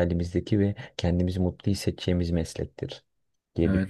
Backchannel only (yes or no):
no